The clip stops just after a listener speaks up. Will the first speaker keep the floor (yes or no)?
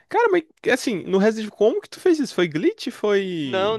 no